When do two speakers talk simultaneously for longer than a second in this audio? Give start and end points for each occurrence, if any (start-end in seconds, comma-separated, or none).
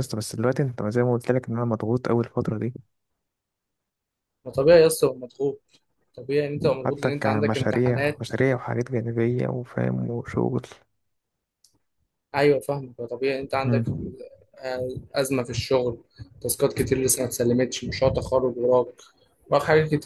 6.8-8.3